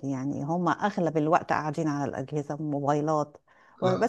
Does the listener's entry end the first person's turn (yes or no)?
no